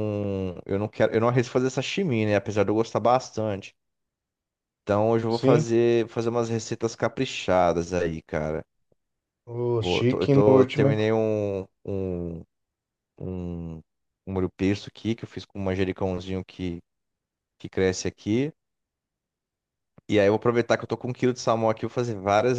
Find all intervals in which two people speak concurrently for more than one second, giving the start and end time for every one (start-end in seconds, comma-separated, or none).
9.8-11.0